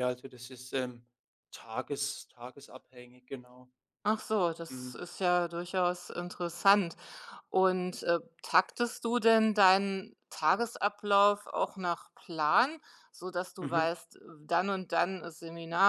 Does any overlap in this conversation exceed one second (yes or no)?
no